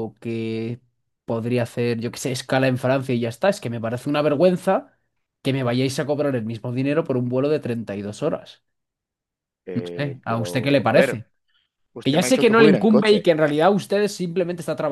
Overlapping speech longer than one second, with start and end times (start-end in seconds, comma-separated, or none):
9.7-11.2, 12.0-13.3